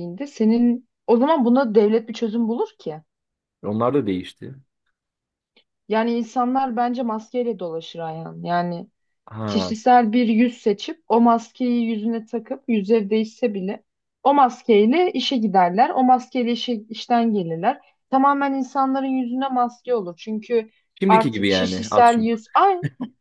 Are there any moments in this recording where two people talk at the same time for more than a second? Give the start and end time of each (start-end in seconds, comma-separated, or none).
21.1-22.4